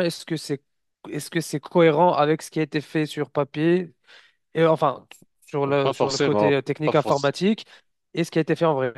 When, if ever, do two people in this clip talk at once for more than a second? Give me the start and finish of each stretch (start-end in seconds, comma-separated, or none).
5.8-7.3